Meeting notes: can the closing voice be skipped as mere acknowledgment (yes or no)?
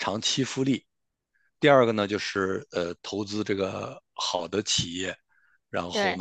yes